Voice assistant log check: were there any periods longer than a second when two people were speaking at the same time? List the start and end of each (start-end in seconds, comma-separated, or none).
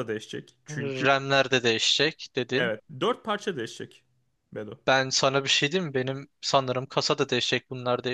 none